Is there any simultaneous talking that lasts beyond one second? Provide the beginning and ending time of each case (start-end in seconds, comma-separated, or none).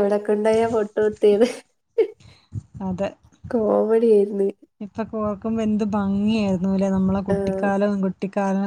none